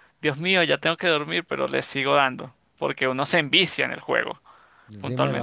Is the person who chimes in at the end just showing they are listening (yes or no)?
no